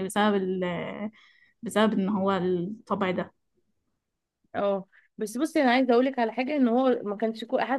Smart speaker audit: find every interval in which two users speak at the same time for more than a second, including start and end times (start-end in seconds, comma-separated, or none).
none